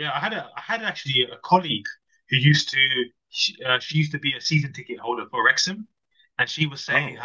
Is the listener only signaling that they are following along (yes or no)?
yes